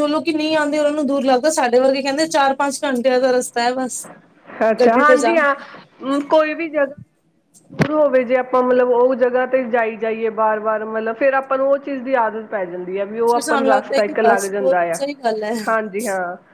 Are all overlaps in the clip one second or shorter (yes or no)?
no